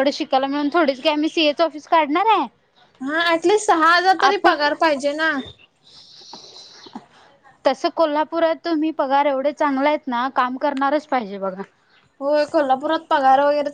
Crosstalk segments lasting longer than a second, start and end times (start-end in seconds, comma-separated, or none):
none